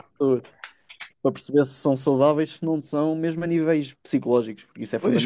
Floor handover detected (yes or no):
yes